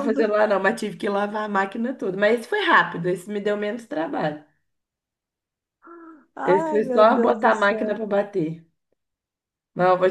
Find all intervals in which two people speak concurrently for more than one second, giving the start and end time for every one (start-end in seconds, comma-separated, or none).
6.4-7.9